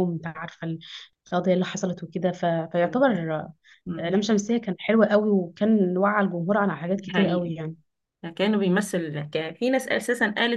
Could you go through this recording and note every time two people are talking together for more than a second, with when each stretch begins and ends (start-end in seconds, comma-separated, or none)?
none